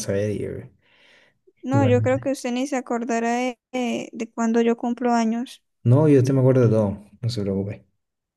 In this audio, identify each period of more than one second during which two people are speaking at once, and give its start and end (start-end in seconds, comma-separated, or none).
none